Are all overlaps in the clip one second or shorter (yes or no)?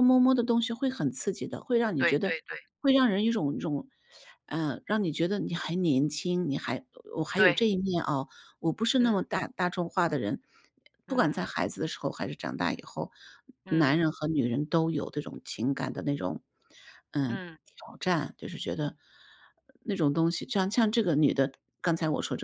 yes